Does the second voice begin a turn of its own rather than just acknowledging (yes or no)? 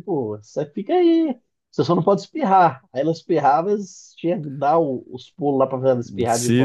yes